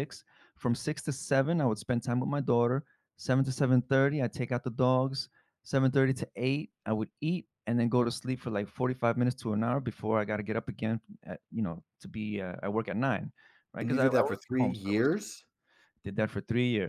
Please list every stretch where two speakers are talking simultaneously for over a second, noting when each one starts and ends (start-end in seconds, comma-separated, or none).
13.8-15.1